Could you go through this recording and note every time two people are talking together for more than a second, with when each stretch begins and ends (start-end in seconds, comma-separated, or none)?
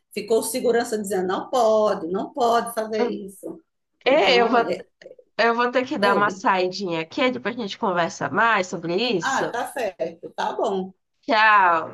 none